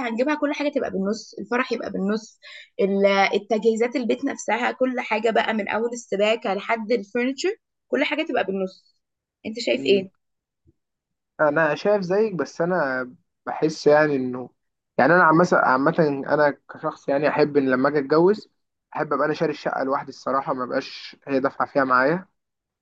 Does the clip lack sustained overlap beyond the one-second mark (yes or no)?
yes